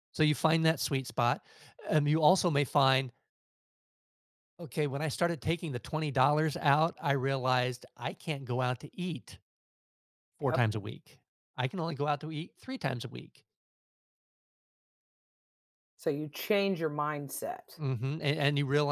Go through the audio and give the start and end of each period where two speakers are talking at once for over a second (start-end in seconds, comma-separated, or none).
none